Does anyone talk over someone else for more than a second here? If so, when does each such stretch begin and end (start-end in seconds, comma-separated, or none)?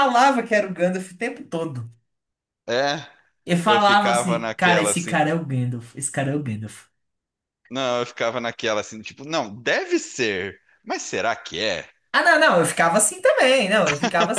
3.6-5.2